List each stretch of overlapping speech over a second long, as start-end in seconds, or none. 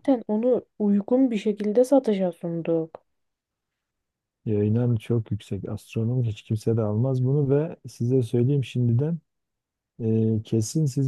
none